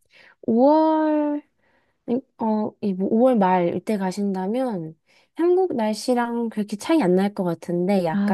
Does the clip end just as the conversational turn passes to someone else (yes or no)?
no